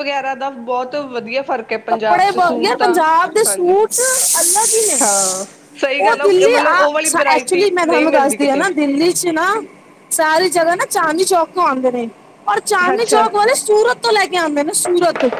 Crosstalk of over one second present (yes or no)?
yes